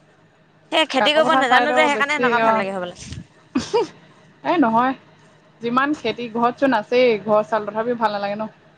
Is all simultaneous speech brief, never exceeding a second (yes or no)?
no